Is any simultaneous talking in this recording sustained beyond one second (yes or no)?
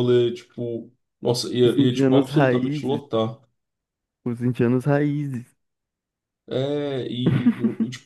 yes